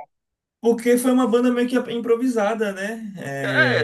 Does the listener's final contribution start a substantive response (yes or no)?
yes